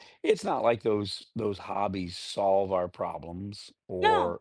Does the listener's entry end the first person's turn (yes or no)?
no